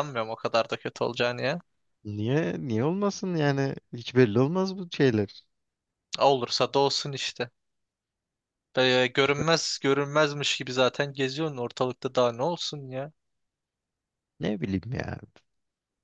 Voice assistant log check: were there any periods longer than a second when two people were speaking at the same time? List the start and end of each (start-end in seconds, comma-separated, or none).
none